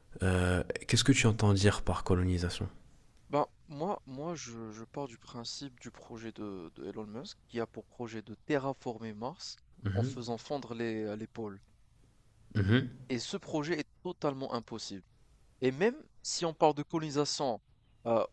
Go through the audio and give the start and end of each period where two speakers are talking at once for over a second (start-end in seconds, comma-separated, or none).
none